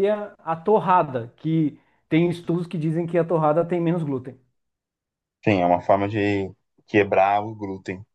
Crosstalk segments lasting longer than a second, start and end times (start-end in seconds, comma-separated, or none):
none